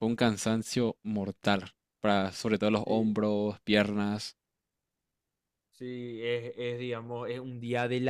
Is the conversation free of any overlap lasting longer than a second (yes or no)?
yes